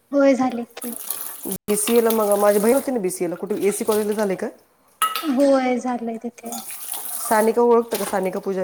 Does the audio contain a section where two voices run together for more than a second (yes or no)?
no